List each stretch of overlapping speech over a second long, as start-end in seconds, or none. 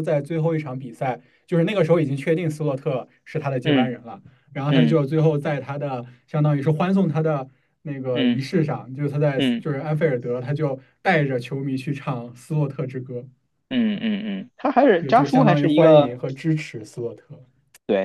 15.0-16.2